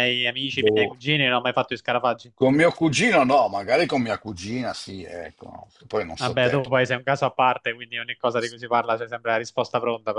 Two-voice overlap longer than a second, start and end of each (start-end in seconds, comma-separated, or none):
none